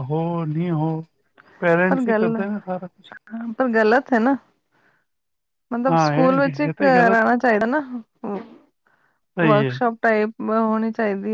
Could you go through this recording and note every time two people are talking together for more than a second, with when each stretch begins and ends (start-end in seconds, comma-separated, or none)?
5.9-7.2